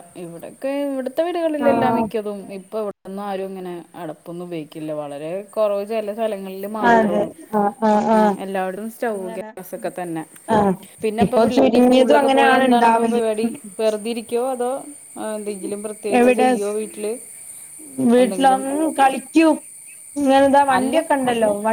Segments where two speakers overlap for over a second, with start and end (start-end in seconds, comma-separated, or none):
11.2-13.2